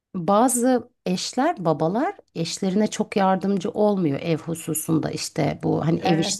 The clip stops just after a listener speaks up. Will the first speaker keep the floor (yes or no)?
yes